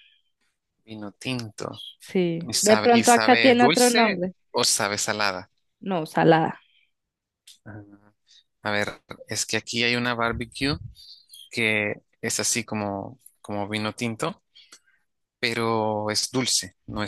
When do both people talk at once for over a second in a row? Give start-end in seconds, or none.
2.5-4.3